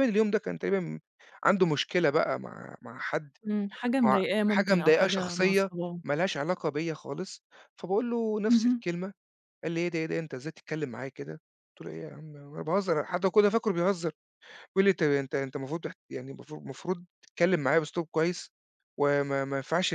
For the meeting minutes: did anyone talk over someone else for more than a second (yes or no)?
yes